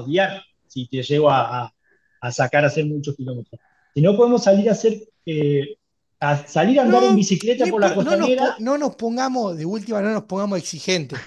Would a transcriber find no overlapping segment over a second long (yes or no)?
no